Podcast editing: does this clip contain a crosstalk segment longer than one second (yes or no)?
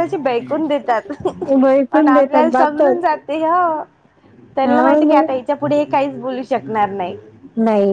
yes